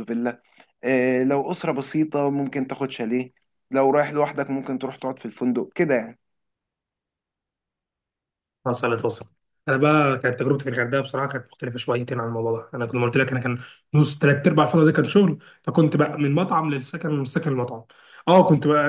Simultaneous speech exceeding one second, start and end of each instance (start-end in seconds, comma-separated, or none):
none